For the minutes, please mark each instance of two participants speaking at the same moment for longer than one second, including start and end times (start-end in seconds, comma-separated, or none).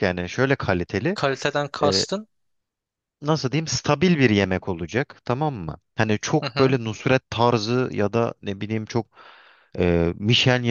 none